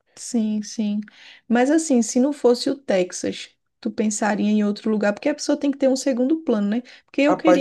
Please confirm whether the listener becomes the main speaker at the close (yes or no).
no